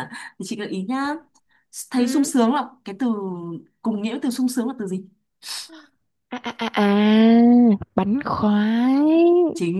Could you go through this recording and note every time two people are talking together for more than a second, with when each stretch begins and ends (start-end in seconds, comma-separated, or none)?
none